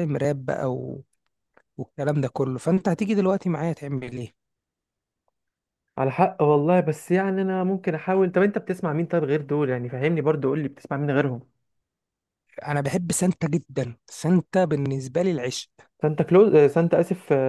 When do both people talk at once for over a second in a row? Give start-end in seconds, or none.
none